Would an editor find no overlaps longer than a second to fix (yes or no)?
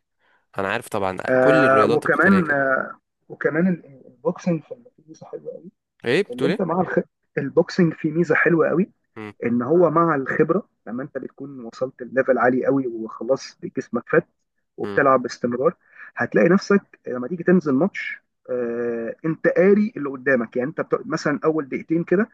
no